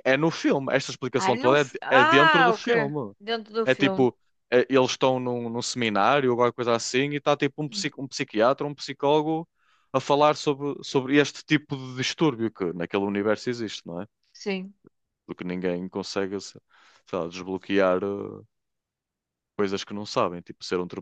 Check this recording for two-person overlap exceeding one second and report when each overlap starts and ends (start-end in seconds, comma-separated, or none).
1.2-2.7